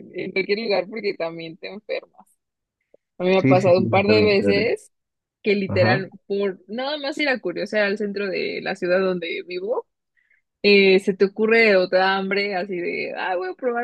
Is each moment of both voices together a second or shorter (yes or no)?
no